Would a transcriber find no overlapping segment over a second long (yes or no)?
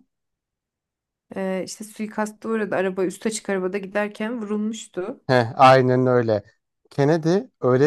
yes